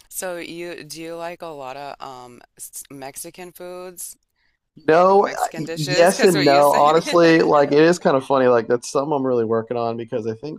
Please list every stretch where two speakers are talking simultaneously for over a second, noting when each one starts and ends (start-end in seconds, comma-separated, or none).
5.0-7.2